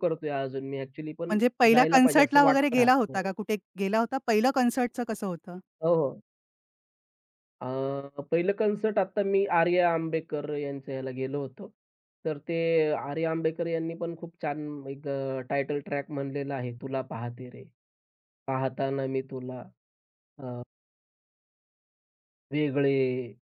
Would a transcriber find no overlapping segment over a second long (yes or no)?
no